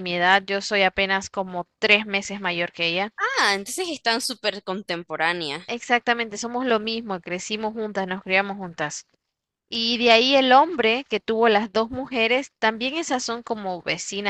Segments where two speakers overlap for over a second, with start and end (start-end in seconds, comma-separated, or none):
none